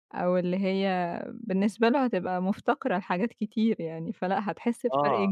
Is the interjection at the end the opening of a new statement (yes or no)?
no